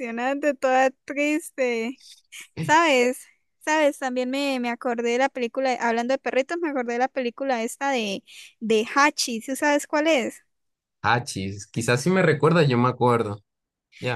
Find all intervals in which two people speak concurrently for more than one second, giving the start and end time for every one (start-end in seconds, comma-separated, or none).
none